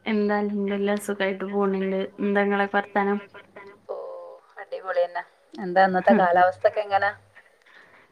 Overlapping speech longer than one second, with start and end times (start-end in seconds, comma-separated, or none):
none